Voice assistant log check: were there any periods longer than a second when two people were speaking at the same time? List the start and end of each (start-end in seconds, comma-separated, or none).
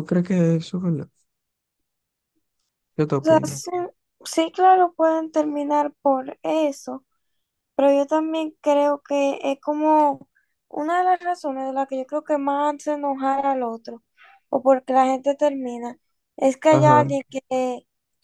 none